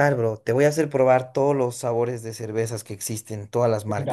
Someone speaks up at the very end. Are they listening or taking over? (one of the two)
taking over